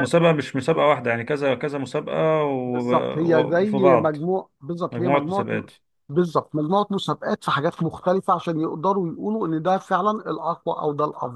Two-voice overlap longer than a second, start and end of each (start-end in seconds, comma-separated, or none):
2.7-4.2